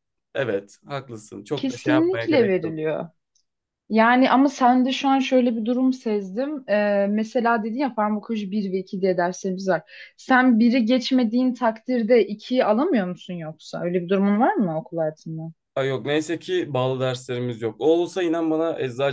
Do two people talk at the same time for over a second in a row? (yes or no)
yes